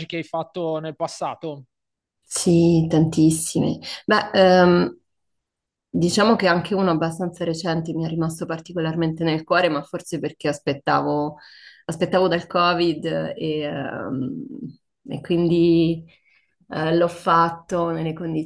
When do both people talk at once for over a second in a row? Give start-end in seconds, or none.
none